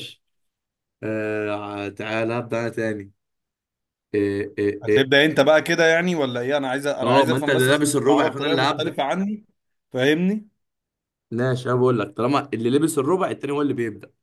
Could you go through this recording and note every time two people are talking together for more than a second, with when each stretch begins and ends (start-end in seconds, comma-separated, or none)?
7.0-9.0